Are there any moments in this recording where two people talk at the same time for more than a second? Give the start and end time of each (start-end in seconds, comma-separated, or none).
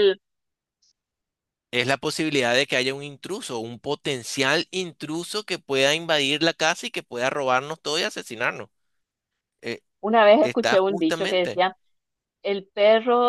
10.4-11.6